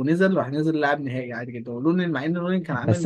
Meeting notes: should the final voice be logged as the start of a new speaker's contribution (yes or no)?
yes